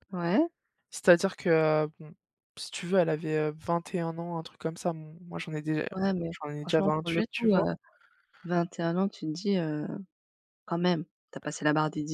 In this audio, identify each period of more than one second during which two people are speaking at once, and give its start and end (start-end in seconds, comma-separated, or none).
6.3-7.6